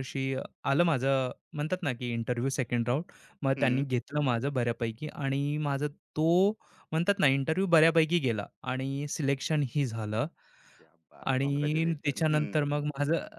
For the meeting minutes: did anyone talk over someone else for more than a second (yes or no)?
yes